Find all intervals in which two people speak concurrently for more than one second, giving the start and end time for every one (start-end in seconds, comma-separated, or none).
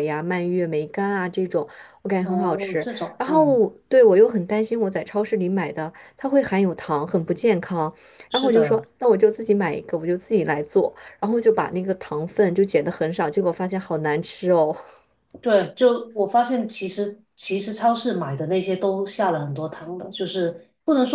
2.2-3.6